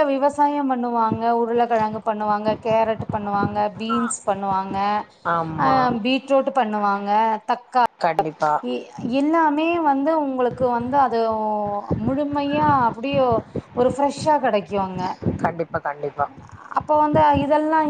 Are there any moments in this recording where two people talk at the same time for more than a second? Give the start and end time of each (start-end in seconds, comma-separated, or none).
none